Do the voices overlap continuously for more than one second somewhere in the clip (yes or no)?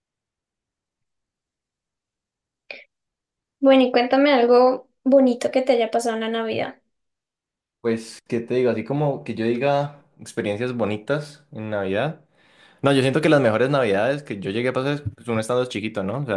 no